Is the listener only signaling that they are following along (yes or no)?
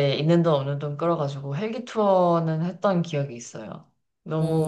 no